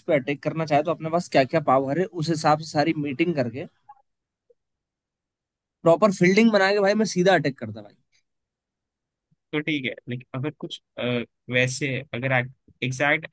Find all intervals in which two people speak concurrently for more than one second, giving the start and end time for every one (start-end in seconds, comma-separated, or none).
none